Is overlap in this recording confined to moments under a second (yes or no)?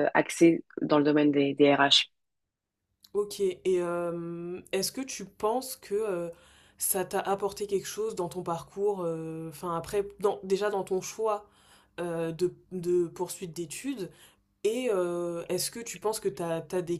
yes